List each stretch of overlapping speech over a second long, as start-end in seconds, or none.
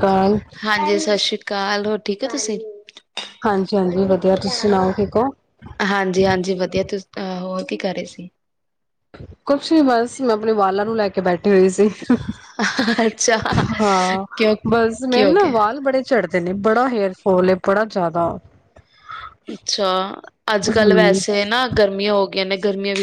none